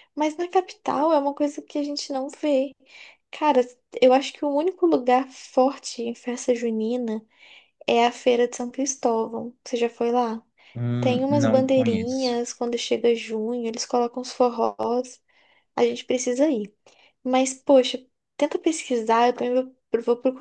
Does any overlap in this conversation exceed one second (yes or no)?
yes